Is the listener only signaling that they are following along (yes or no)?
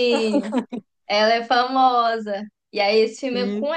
yes